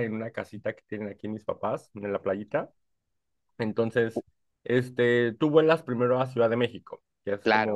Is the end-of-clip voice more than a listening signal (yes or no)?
no